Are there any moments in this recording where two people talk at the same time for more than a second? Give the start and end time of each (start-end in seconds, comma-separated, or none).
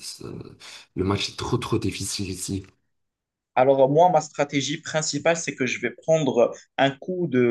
none